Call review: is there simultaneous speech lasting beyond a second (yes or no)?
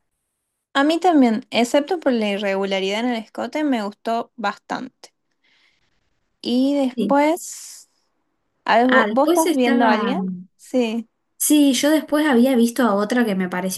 yes